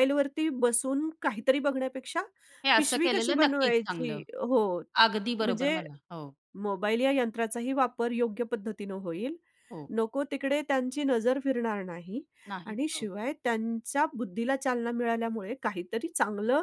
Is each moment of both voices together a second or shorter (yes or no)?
no